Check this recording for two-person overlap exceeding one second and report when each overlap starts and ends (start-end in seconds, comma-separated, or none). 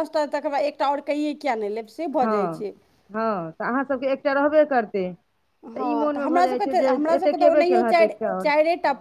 5.9-8.5